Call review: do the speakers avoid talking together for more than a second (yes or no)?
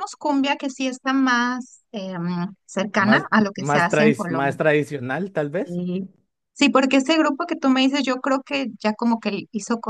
no